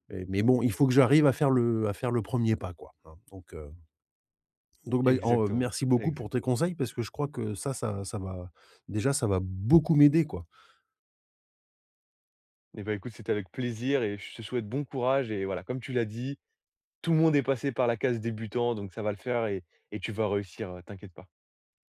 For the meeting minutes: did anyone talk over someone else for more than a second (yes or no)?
yes